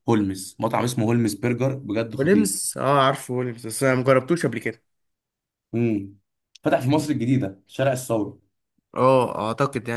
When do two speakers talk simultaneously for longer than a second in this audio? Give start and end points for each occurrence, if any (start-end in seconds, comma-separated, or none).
none